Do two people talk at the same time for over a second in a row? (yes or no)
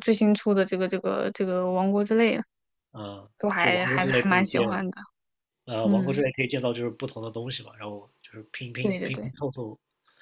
yes